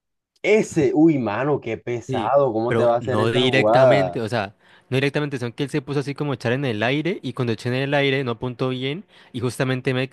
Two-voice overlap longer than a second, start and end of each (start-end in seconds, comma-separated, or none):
2.1-4.2